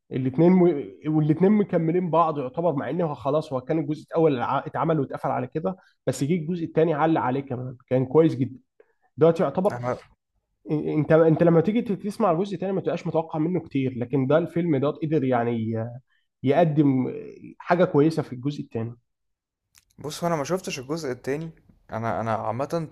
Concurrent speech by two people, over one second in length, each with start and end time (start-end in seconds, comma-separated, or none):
none